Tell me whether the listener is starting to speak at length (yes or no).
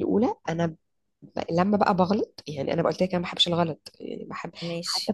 no